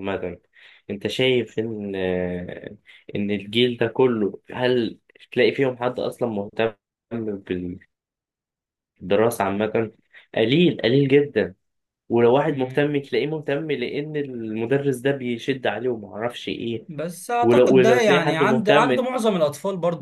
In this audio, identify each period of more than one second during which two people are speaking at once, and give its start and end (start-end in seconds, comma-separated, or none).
17.4-19.1